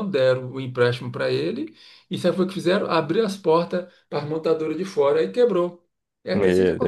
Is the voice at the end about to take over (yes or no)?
no